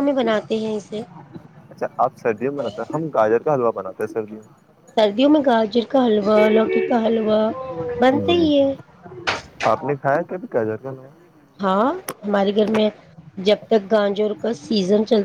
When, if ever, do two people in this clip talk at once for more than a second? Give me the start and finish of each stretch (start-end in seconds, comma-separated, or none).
none